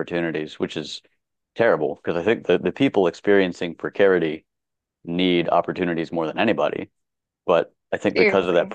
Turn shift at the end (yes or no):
no